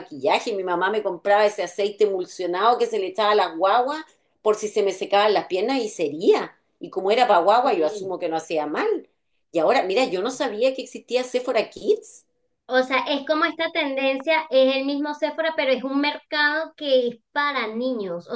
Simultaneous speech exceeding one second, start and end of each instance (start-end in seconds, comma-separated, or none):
none